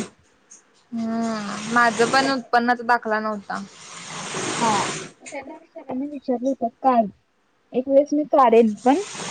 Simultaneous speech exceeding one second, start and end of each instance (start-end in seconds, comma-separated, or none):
none